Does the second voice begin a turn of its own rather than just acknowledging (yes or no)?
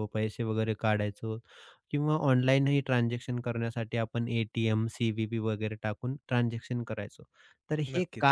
no